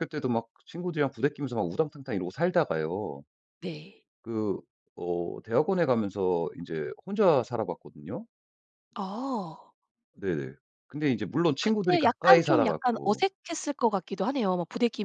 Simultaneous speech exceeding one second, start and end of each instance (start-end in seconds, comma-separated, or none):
11.6-13.2